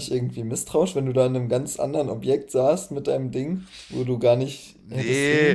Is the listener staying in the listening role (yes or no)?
no